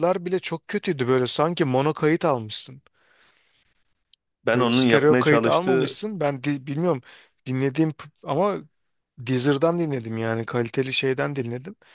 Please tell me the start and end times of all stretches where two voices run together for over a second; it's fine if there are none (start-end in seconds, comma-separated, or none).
4.4-6.0